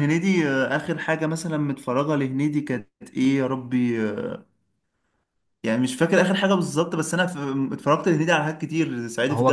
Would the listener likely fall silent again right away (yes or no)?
no